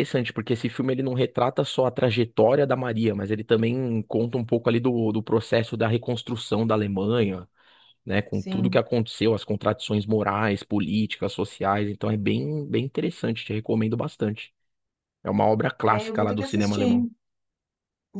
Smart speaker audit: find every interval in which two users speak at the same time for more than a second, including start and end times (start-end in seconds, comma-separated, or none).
15.8-17.0